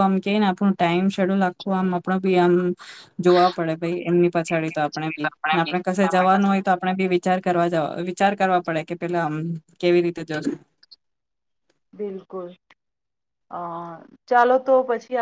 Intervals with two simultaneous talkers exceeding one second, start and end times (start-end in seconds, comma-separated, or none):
none